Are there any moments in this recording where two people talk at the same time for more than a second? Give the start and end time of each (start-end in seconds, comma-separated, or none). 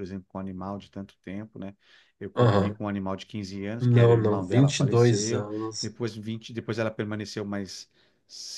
3.8-5.9